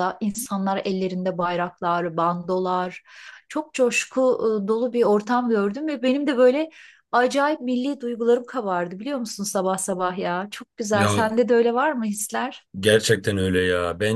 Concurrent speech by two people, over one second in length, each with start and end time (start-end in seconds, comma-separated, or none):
none